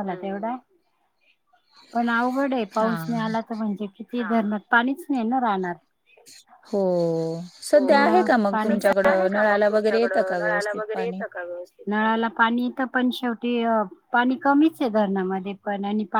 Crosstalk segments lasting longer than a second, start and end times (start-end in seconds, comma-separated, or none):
7.8-11.2